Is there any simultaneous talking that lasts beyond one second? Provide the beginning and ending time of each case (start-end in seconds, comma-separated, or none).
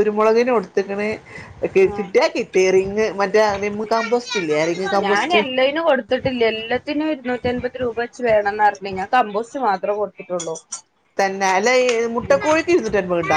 none